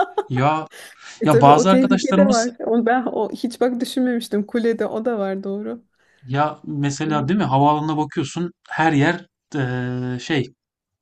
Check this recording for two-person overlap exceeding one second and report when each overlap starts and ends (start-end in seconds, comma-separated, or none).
1.2-2.6